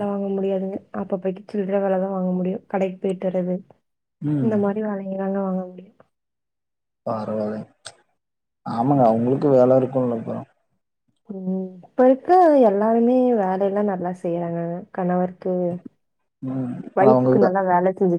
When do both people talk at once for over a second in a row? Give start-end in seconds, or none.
none